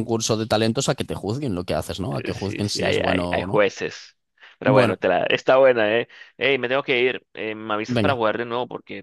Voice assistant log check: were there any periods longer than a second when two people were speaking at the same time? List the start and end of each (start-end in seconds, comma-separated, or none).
2.1-3.6